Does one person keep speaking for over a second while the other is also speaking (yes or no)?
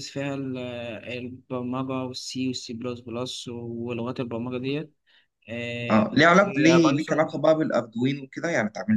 yes